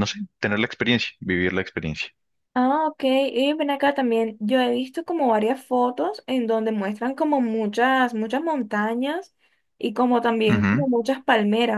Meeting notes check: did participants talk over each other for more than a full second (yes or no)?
no